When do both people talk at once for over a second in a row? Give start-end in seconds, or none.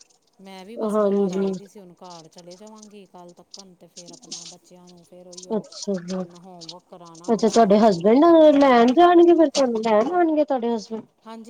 7.3-8.6